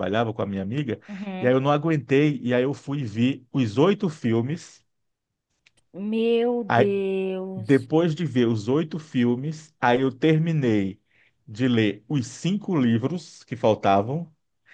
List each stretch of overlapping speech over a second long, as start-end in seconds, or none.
none